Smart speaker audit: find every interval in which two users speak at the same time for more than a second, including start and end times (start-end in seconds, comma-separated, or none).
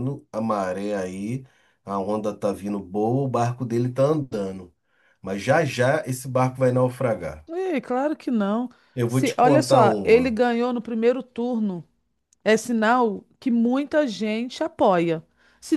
9.1-10.3